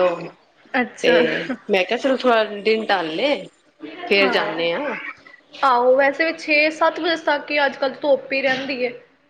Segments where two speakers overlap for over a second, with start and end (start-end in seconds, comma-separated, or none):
none